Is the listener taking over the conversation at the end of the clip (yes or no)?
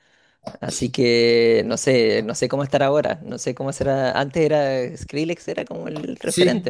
yes